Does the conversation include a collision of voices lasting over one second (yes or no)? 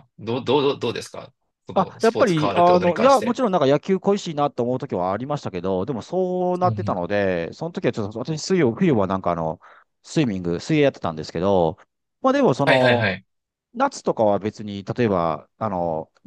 yes